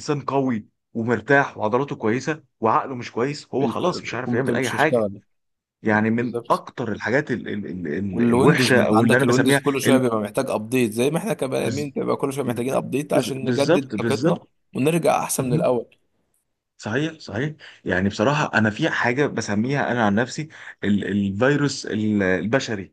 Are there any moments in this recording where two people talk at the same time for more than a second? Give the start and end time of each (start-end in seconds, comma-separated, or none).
3.6-5.1, 8.1-10.0, 13.1-14.4